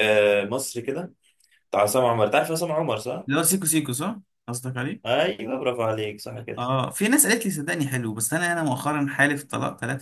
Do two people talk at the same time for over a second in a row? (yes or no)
no